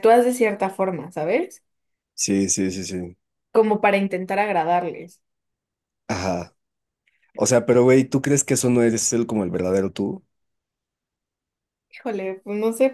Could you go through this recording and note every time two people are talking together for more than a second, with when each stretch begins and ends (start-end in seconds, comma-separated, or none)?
none